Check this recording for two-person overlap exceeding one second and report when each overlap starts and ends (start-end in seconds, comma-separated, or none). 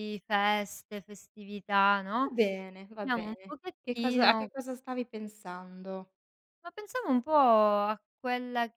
3.0-4.5